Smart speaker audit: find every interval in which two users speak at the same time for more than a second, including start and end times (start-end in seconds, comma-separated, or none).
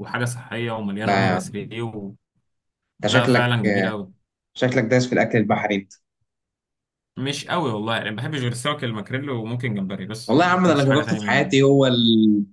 10.3-11.5